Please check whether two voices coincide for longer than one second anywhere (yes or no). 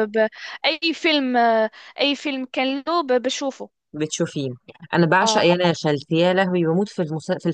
no